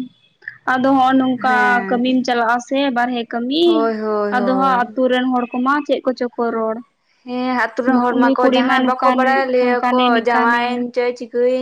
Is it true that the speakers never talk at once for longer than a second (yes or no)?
no